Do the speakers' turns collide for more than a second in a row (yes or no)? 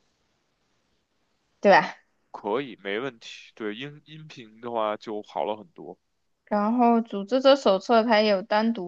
no